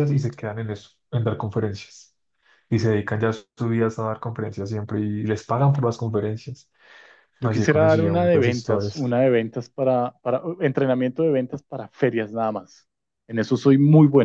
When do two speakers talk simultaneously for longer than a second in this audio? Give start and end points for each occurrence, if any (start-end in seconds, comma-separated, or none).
7.4-9.2